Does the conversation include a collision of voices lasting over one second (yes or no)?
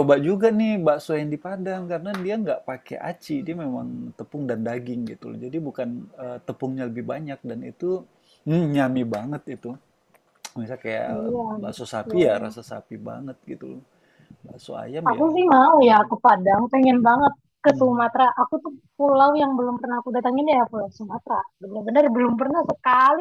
yes